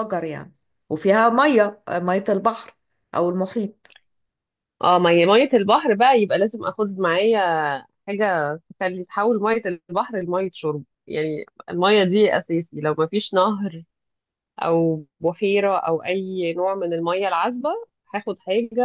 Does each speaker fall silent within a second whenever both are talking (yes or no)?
yes